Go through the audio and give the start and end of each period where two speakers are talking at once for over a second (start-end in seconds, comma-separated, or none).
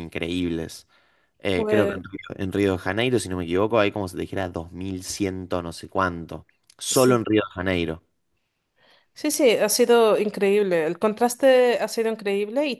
none